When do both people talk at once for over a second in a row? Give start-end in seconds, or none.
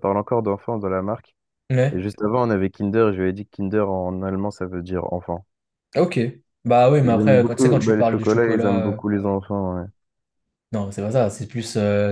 7.0-9.0